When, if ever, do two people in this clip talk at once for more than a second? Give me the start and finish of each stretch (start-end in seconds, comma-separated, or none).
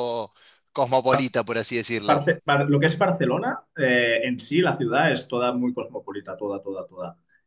none